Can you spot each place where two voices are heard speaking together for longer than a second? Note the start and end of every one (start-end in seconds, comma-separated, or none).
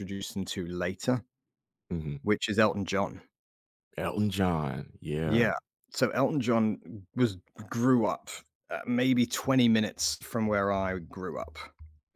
none